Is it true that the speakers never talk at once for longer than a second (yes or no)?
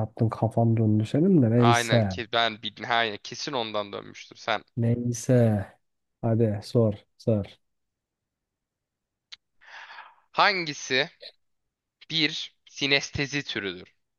yes